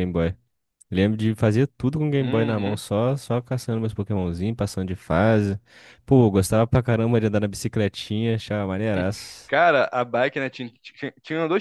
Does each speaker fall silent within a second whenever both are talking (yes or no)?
yes